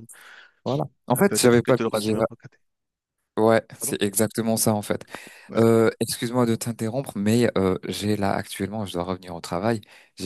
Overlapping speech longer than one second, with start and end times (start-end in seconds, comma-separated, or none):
none